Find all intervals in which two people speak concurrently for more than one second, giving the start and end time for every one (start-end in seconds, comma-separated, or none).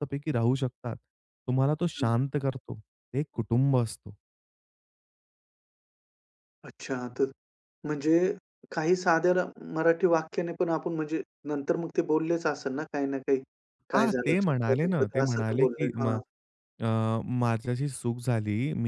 13.9-16.2